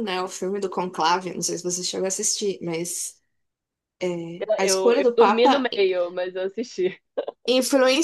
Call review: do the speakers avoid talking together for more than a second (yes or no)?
no